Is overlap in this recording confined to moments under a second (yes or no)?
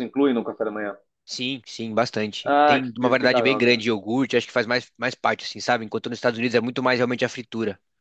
no